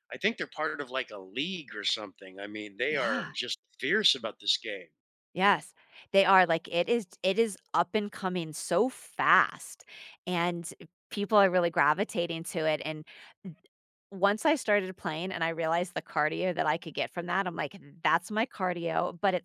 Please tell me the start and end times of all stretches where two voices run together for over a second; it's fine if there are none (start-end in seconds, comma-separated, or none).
none